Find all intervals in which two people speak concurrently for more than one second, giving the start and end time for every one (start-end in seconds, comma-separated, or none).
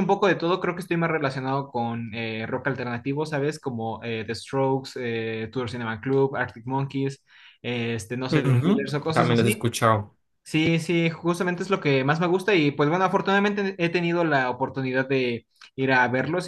8.3-9.7